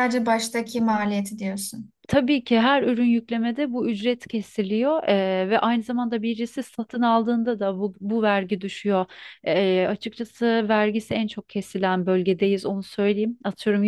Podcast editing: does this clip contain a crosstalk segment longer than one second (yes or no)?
no